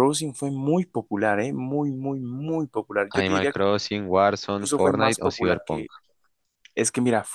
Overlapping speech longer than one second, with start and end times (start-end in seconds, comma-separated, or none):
4.5-5.9